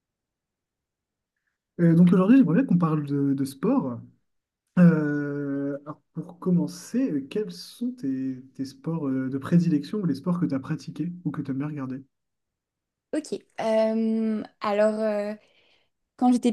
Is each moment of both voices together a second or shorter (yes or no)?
yes